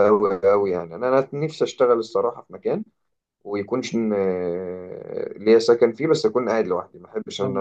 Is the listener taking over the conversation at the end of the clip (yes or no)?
yes